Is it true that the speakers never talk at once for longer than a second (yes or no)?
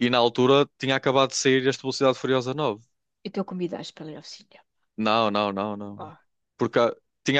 yes